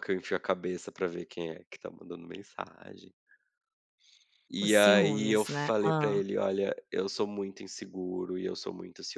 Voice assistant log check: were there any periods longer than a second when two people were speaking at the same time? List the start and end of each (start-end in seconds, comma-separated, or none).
4.6-6.2